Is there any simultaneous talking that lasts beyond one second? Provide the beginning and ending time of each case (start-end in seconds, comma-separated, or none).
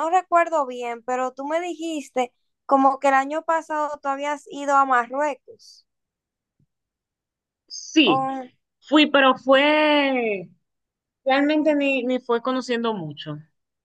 none